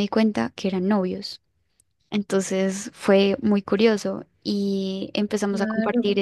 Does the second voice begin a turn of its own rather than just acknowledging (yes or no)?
no